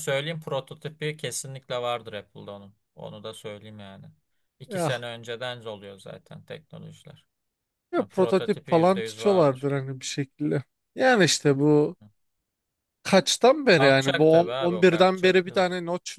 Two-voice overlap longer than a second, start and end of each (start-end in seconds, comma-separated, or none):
8.0-9.7, 13.7-15.7